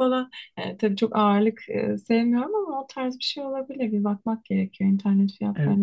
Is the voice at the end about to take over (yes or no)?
yes